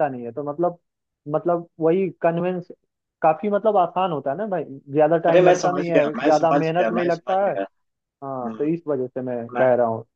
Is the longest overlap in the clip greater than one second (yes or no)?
yes